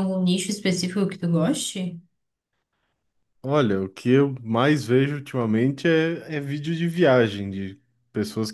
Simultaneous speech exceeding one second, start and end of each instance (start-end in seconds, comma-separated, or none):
none